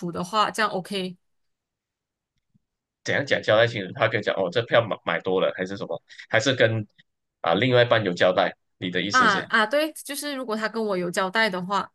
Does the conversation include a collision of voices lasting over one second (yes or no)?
no